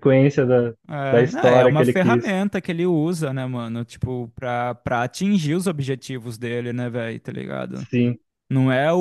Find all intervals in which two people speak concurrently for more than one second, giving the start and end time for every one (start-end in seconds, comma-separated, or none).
1.1-2.4